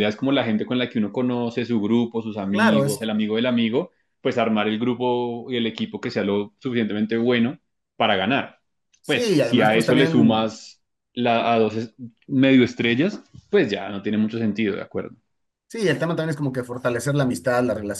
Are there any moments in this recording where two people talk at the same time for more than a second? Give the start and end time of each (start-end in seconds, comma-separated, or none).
9.1-10.5